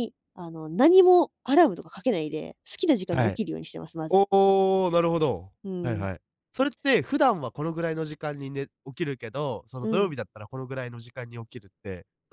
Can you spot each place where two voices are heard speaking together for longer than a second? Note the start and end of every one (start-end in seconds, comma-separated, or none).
none